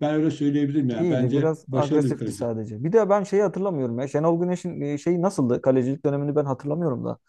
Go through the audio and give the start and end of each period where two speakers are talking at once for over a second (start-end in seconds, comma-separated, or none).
1.0-2.4